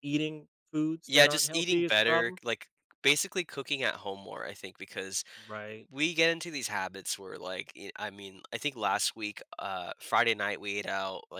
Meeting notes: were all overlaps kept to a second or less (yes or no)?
no